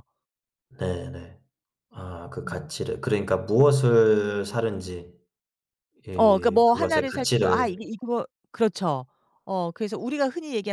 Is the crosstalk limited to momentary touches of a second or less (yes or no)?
no